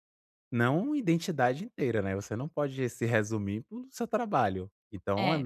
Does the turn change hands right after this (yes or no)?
no